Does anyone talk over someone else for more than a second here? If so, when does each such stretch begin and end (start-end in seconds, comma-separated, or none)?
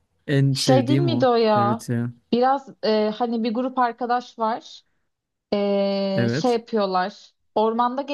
0.5-1.9